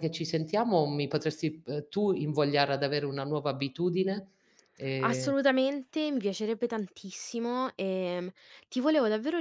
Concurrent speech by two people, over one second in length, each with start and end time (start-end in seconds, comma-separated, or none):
none